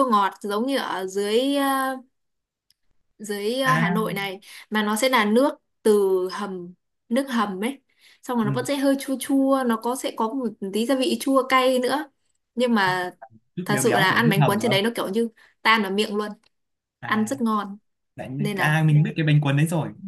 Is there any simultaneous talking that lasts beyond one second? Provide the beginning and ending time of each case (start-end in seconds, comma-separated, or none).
13.6-14.9